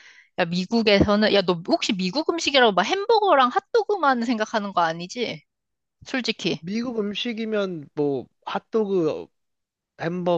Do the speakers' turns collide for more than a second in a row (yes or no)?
no